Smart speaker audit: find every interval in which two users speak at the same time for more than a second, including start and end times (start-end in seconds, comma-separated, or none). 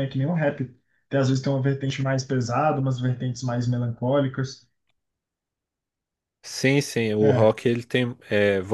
none